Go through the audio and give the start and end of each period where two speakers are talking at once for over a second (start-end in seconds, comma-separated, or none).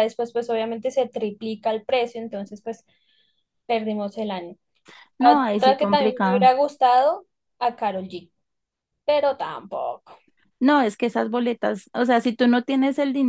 5.2-6.5